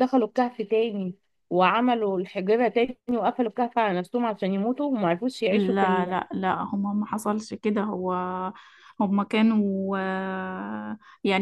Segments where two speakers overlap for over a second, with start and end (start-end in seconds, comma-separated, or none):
none